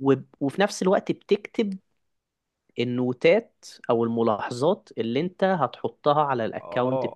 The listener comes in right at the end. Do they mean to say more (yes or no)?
yes